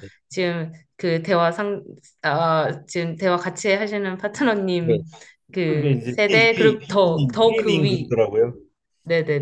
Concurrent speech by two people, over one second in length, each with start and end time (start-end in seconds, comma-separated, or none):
5.7-8.1